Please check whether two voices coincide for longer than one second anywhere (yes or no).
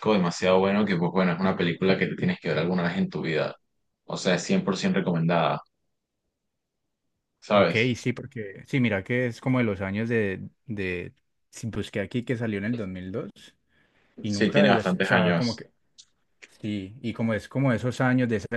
yes